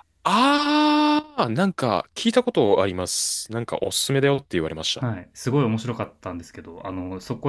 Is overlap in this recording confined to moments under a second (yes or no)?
yes